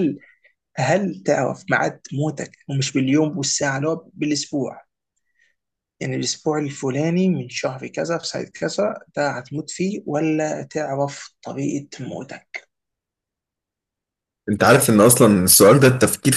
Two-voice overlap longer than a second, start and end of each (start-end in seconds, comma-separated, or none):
none